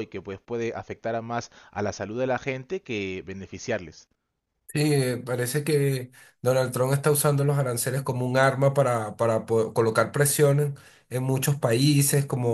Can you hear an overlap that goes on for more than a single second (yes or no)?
no